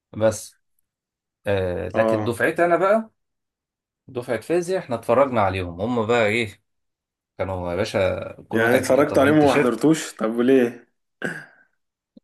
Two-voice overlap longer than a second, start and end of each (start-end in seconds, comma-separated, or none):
8.5-9.9